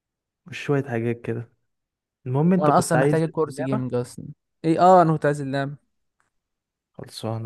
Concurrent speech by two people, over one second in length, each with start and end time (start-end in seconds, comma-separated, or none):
2.5-3.8